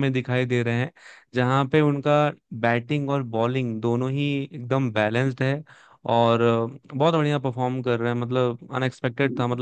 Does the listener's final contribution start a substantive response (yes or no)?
no